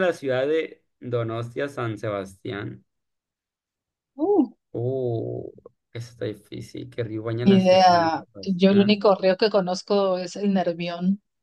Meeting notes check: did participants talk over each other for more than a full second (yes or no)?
yes